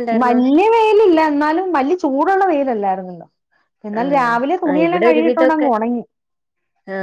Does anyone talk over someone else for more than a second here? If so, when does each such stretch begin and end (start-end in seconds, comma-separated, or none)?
4.0-5.7